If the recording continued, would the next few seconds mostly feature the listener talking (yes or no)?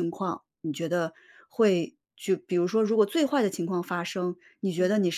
no